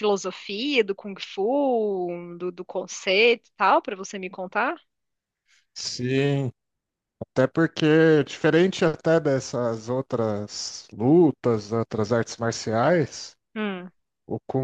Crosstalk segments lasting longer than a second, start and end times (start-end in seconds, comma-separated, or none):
none